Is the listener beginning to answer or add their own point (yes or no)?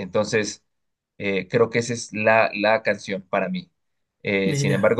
no